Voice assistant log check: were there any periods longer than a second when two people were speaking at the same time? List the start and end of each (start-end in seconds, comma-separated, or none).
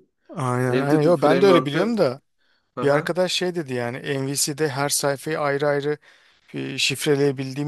0.7-1.9